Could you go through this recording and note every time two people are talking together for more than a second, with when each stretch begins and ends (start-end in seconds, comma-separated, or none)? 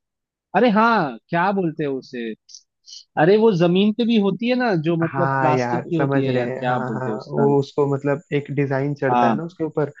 5.1-7.5